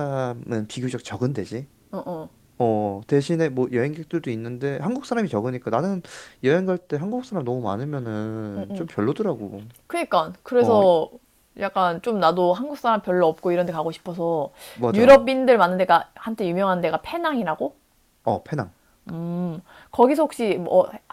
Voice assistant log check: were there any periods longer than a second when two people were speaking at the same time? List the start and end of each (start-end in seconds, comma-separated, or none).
none